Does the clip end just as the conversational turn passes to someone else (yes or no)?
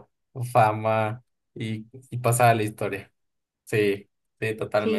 yes